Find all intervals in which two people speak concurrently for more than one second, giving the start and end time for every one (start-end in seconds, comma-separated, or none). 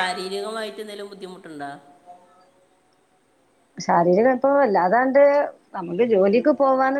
none